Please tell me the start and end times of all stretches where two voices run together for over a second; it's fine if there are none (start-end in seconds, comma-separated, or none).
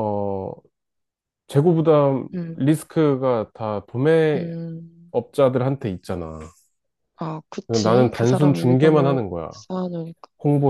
7.7-9.5